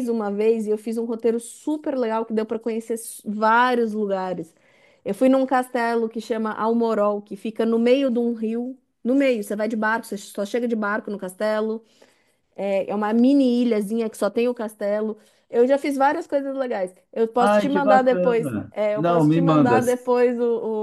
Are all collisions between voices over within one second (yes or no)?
no